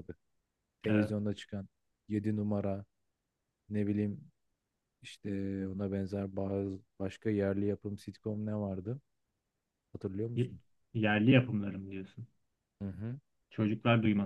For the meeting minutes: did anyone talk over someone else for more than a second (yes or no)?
no